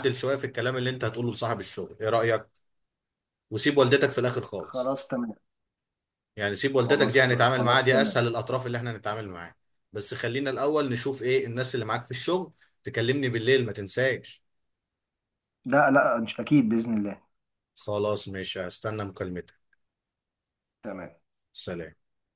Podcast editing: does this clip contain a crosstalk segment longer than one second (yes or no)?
yes